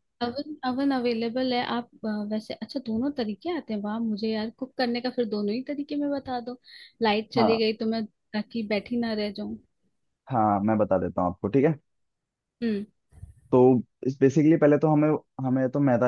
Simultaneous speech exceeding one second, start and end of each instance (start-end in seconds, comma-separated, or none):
none